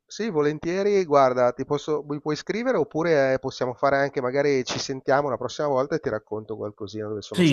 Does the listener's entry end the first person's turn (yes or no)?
yes